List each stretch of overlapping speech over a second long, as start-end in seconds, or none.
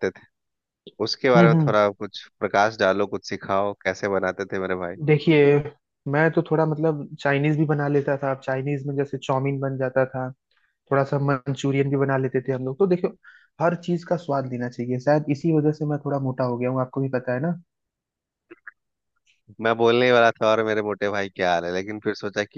none